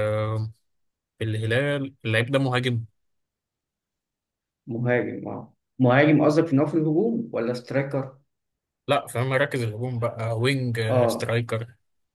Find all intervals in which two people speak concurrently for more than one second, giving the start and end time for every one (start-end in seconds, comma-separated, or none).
none